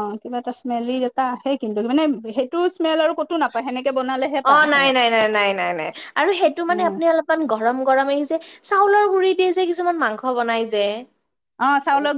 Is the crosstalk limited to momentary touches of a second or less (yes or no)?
yes